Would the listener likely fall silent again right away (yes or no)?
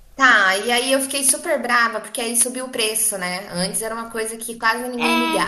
no